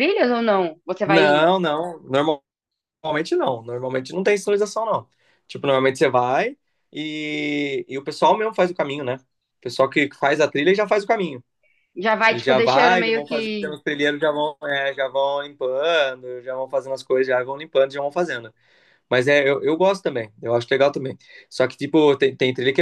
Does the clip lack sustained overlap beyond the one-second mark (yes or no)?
no